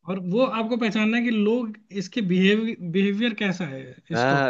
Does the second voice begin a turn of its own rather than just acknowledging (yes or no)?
yes